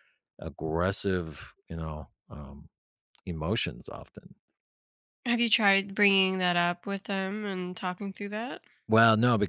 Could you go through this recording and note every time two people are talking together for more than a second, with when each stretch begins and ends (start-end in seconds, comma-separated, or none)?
none